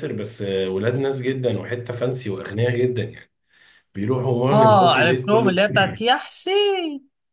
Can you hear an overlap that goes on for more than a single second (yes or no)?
yes